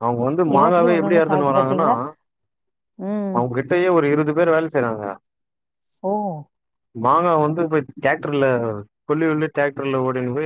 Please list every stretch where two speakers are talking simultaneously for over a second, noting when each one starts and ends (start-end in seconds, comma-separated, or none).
0.6-1.9